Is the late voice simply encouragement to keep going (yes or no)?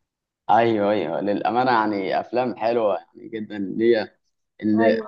yes